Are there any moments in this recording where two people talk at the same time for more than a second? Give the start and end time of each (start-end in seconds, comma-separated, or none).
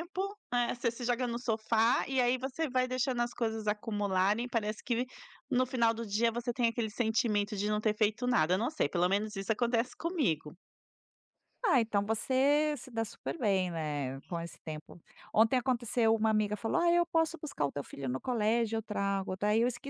none